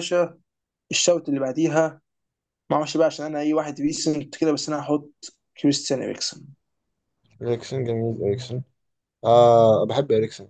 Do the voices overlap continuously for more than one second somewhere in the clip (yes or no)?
no